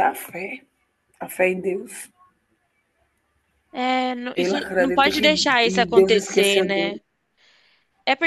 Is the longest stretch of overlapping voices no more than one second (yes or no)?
no